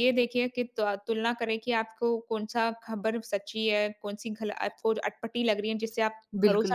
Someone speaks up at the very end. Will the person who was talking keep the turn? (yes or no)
no